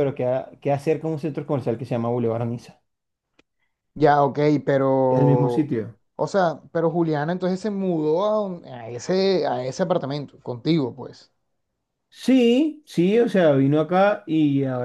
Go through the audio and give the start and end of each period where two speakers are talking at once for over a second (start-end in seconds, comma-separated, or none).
none